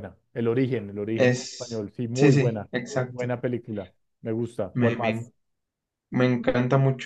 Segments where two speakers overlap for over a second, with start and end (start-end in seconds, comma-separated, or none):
1.1-3.4